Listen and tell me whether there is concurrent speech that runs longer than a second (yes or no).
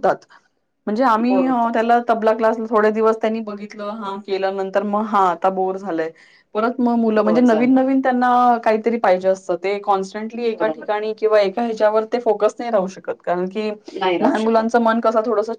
no